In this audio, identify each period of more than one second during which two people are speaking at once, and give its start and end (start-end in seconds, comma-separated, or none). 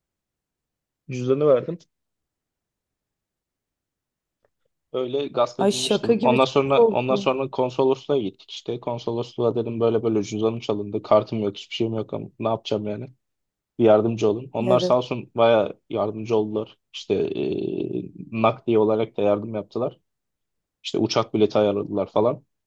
5.6-7.3